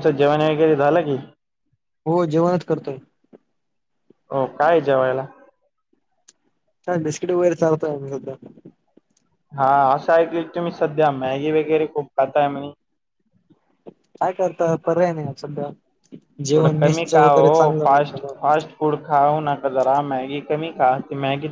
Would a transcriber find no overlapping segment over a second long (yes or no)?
no